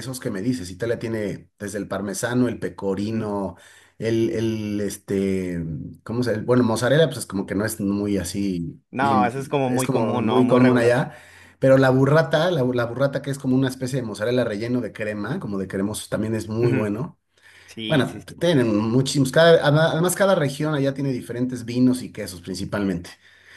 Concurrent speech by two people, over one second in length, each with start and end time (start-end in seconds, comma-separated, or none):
8.9-11.0